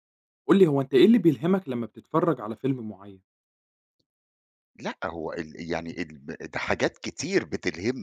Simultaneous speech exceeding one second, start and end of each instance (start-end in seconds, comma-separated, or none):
none